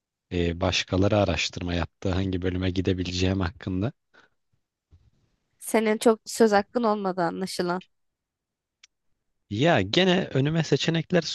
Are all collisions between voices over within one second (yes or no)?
yes